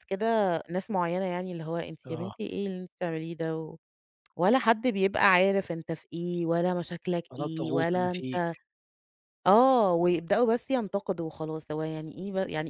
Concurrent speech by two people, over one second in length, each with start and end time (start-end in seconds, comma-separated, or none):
7.3-8.6